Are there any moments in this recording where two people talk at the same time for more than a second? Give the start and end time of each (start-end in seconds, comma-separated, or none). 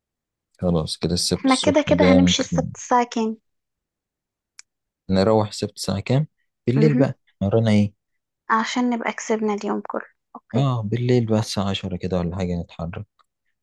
1.4-2.6